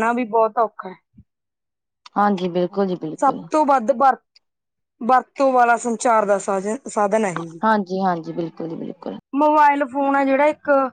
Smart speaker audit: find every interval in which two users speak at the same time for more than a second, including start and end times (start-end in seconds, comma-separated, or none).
none